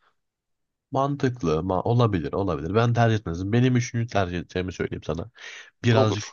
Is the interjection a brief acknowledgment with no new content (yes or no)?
yes